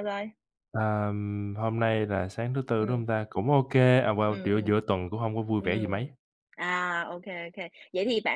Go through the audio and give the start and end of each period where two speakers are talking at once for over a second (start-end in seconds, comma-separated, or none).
none